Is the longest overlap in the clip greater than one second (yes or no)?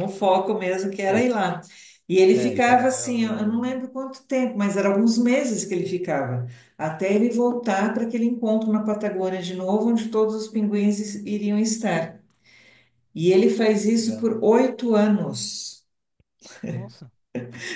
yes